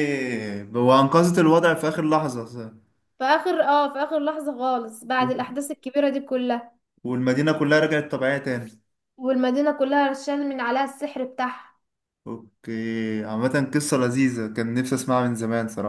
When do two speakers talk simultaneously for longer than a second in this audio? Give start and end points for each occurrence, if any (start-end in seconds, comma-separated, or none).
none